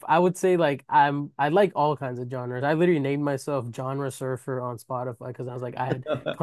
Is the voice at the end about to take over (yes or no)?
no